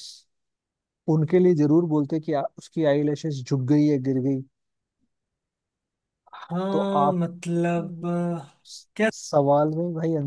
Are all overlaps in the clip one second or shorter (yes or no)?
yes